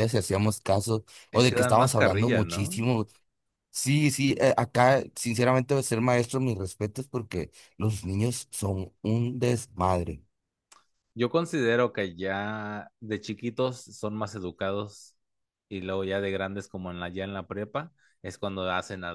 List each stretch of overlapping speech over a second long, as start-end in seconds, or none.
1.3-2.8